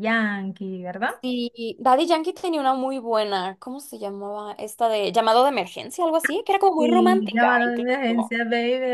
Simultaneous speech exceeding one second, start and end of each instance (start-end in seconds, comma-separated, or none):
6.8-8.4